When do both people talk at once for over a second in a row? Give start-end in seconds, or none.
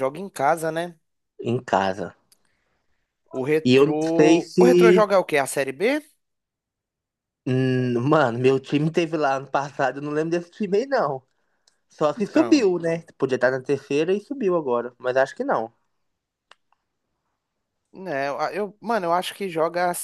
3.6-5.1